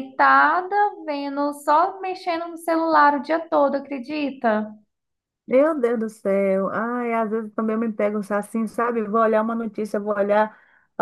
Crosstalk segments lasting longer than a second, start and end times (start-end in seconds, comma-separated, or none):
none